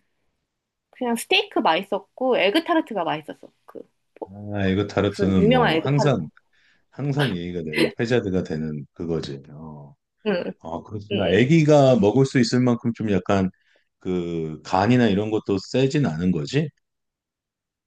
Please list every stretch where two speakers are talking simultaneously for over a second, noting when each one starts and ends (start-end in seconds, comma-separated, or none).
4.5-6.2